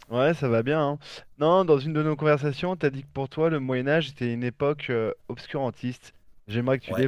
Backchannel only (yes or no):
yes